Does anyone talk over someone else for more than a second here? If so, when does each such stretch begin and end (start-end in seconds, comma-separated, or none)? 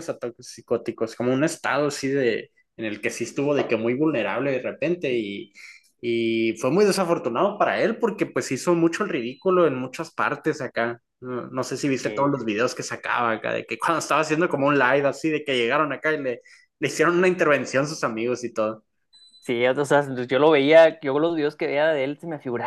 none